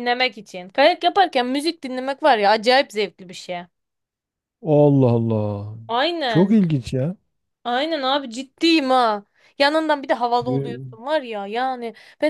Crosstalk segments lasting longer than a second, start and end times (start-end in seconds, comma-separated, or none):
none